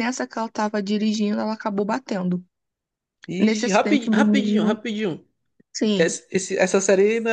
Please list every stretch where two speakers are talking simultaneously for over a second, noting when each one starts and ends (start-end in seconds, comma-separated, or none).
3.4-4.8